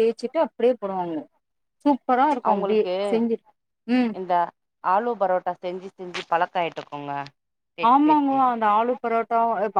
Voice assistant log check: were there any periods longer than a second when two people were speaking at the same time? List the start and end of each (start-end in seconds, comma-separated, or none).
none